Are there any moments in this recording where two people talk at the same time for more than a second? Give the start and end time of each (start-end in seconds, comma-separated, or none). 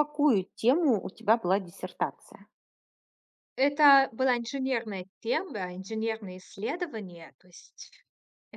none